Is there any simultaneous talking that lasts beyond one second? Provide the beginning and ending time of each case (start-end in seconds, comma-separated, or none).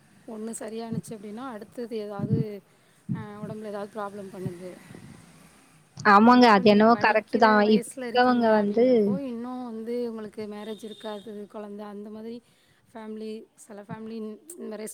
6.3-8.8